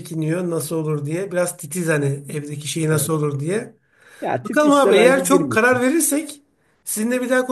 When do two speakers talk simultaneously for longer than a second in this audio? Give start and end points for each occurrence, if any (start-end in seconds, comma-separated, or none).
4.4-5.8